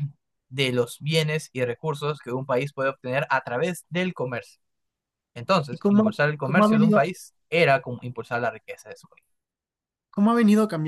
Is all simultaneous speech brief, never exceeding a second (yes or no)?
no